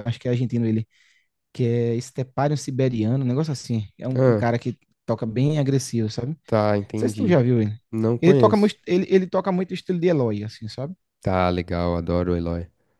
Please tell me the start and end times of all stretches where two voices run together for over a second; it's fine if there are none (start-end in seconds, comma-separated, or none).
none